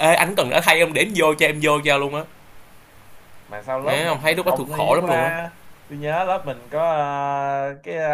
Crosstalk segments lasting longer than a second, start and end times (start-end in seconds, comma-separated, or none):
3.8-5.3